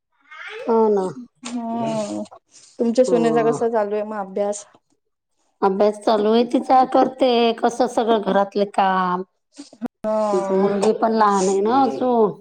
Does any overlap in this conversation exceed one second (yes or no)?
no